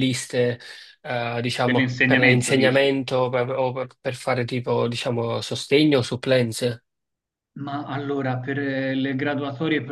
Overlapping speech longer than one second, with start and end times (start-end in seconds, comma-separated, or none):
1.6-2.9